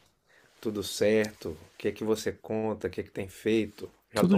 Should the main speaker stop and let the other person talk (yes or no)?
yes